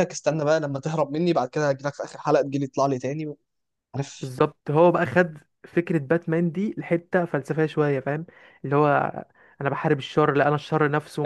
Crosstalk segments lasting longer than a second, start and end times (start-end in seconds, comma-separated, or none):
none